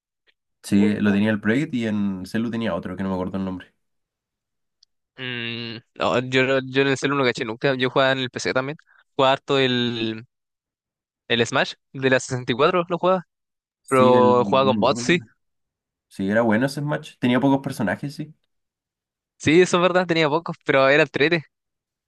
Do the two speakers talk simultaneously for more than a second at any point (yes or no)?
yes